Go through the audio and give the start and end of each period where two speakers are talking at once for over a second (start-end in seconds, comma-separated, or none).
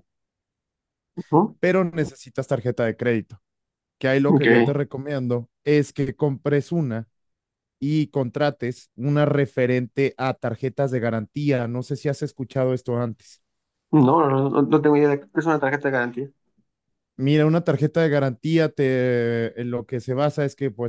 none